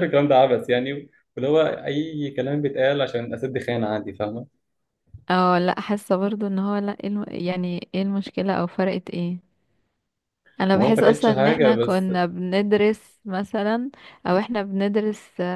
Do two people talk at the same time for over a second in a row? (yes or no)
yes